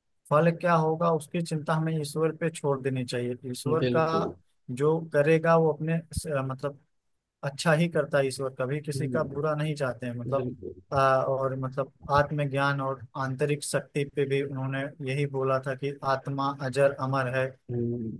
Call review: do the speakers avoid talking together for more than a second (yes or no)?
yes